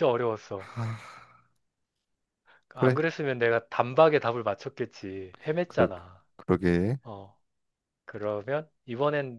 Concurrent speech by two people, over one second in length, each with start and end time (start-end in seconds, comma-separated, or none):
none